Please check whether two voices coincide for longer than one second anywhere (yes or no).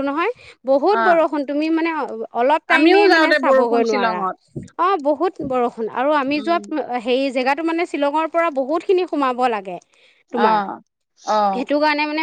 yes